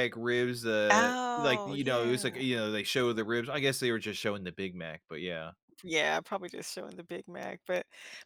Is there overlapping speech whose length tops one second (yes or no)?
yes